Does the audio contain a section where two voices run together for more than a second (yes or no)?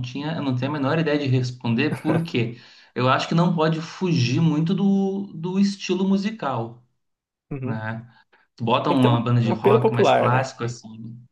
yes